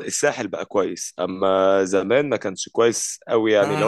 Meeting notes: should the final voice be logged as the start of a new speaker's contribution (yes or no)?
yes